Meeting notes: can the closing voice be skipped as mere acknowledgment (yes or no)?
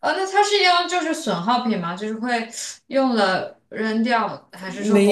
no